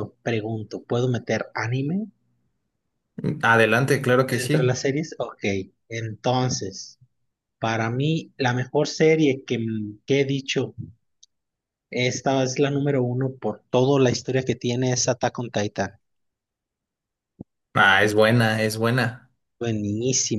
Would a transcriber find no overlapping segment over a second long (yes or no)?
yes